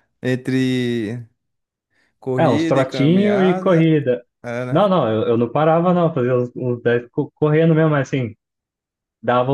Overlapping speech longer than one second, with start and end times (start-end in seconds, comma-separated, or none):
2.4-3.9